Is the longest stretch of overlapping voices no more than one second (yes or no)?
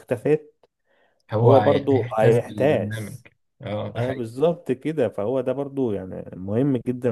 no